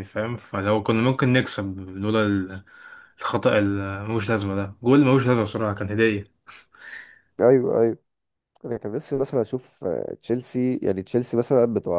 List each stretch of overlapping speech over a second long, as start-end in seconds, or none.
none